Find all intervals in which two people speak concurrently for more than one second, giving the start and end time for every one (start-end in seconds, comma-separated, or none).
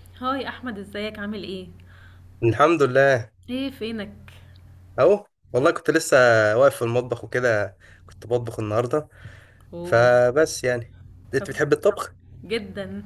none